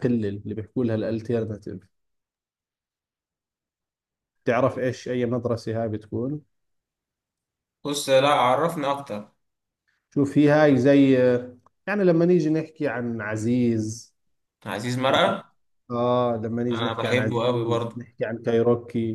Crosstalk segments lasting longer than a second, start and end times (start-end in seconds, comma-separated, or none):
16.7-17.9